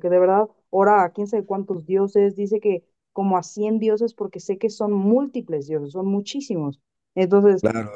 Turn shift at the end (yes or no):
yes